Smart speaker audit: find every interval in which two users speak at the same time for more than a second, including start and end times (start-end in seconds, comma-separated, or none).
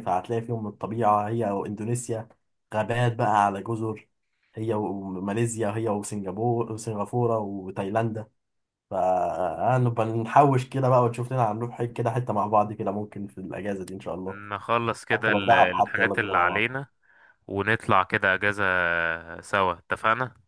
15.1-16.7